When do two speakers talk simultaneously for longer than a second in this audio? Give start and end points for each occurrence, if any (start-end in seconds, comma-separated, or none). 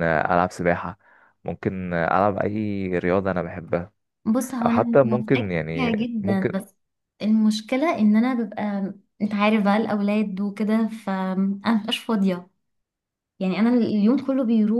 4.7-6.6